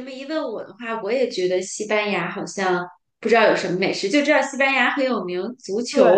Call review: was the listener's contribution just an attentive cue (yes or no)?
no